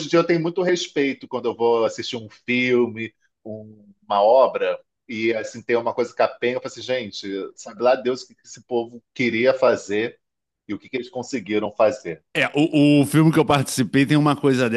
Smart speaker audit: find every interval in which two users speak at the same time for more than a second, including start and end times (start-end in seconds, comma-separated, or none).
none